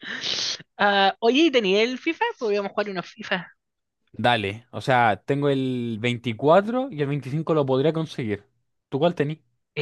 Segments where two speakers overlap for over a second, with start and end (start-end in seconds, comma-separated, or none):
none